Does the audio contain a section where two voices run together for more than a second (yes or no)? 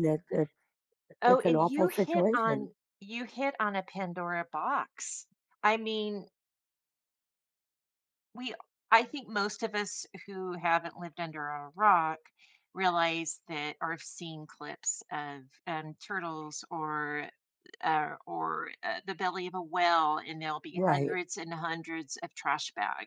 yes